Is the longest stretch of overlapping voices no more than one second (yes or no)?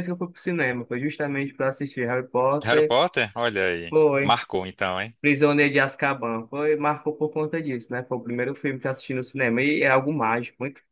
yes